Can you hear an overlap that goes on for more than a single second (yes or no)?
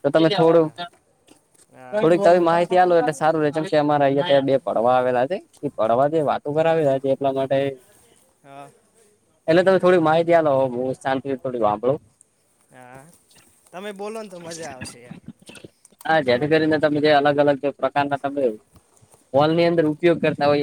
no